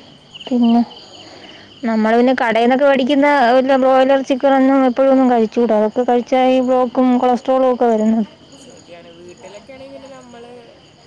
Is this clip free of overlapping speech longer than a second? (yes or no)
yes